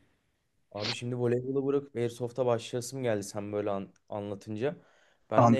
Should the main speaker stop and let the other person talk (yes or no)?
no